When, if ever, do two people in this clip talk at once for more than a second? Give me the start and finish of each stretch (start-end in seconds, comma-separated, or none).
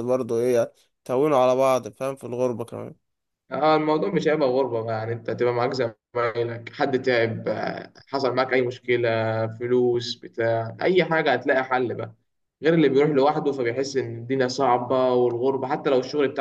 none